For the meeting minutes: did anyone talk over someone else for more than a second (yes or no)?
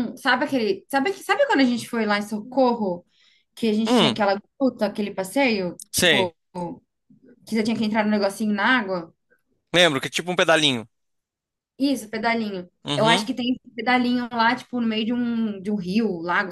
no